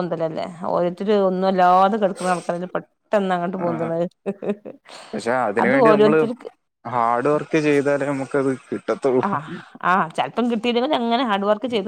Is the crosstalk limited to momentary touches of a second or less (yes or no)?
yes